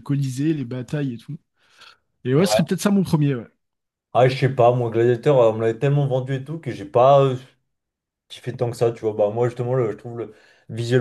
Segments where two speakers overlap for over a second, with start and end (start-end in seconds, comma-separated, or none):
none